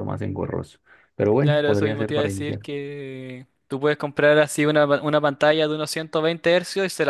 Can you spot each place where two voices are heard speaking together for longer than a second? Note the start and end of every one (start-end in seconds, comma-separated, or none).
1.4-2.6